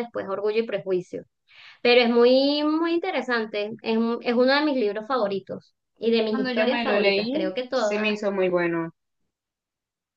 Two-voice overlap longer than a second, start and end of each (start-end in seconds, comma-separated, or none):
6.3-8.2